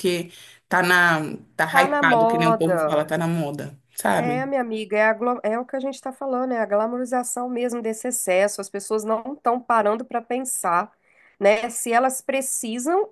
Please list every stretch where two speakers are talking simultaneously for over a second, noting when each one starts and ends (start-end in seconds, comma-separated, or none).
1.7-2.9